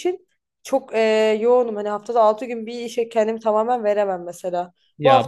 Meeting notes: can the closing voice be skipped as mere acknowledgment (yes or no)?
yes